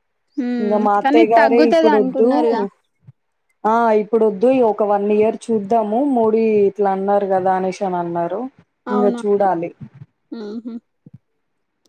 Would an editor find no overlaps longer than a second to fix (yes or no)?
no